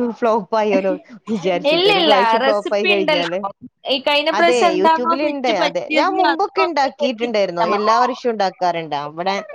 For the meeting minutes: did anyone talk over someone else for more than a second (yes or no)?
yes